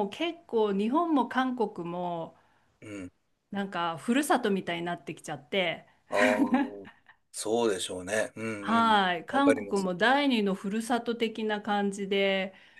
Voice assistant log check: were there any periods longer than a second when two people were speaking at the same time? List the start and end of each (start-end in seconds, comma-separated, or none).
8.6-9.9